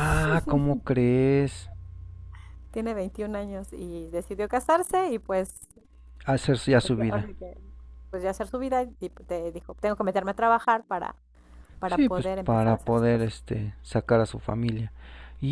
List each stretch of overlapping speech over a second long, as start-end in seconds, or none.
11.8-13.3